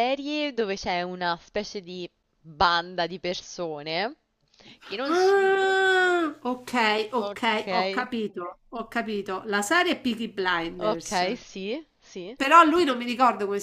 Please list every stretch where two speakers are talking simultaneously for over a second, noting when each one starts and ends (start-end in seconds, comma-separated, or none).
none